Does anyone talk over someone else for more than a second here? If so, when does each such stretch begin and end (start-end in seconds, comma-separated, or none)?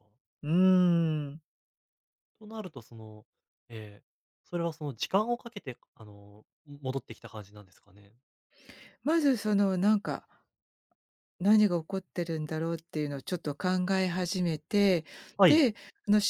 none